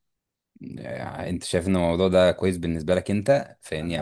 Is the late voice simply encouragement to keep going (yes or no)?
yes